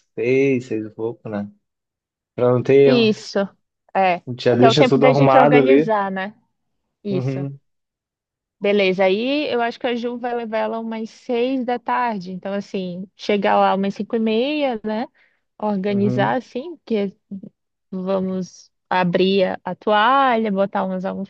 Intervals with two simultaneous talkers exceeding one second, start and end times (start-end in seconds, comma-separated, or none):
4.6-5.9